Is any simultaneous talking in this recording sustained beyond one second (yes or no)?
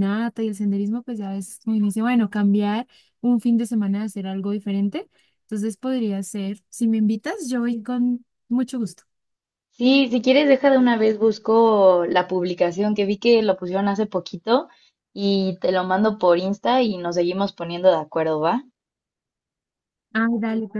no